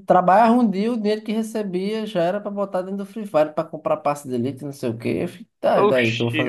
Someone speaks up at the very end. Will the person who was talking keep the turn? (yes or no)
no